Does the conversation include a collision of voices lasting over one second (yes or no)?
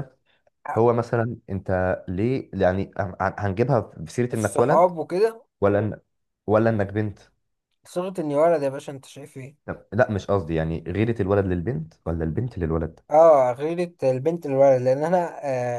no